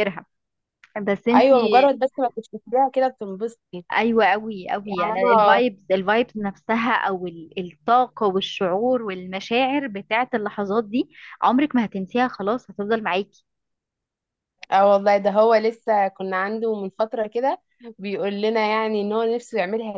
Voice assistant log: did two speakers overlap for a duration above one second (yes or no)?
no